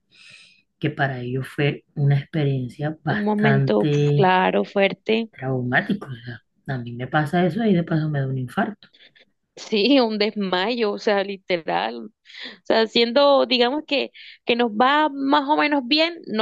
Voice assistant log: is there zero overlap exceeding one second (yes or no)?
no